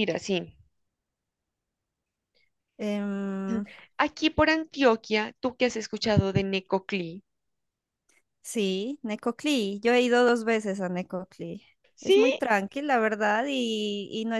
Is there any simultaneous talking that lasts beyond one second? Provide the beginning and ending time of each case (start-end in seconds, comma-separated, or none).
none